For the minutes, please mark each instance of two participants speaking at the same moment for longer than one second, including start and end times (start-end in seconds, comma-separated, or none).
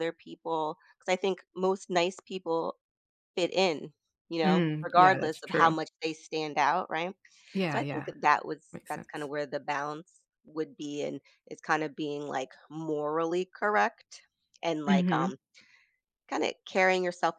4.4-5.8